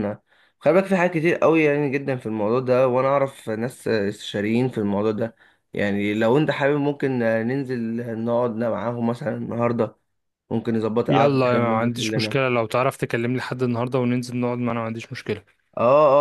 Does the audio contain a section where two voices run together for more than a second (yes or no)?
yes